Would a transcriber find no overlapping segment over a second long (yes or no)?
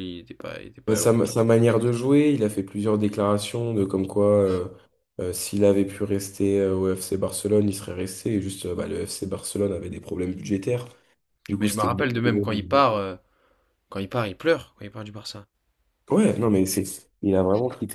yes